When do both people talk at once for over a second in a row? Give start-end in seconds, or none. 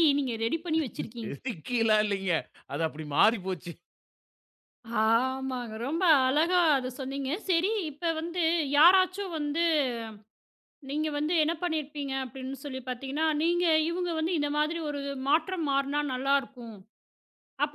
none